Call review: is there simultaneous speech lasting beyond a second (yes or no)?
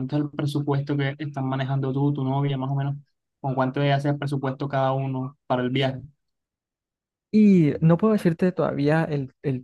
no